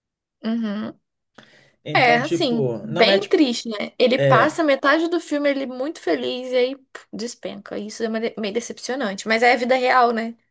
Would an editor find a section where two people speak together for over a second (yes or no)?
yes